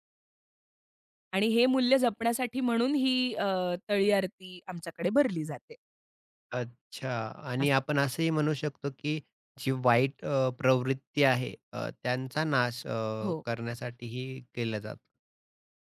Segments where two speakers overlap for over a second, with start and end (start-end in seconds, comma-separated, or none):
none